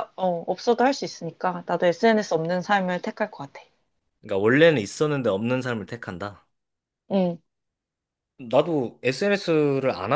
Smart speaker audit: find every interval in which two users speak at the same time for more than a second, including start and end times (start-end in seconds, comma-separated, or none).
none